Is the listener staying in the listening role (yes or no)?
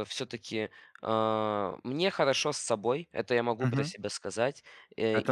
no